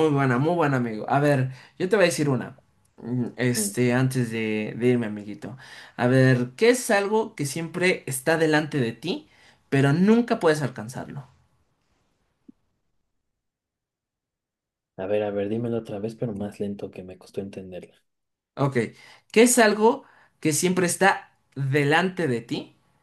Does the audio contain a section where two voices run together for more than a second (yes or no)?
no